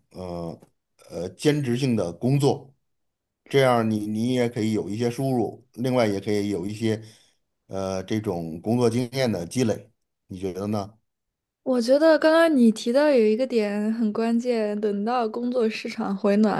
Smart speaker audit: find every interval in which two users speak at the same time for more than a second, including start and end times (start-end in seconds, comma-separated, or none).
none